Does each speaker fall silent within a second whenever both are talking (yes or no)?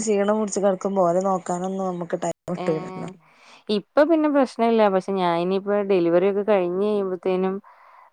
yes